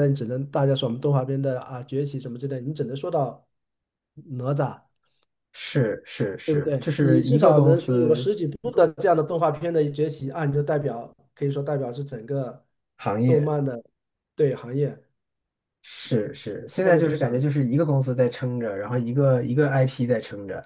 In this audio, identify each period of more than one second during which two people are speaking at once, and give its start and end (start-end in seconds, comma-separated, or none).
6.4-8.3, 16.1-17.4